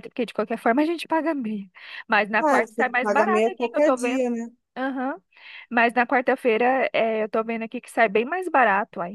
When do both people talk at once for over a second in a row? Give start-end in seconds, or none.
2.4-4.2